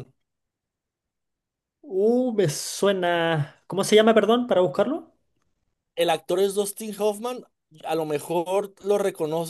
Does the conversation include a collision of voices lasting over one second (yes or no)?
no